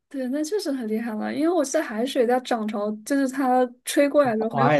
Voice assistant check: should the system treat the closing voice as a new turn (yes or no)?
yes